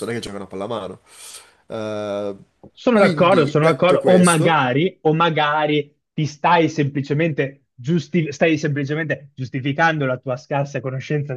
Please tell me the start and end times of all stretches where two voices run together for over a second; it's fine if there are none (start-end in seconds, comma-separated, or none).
2.9-4.6